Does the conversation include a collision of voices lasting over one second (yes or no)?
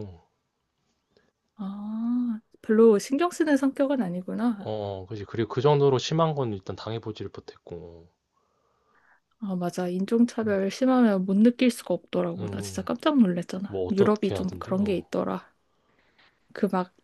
yes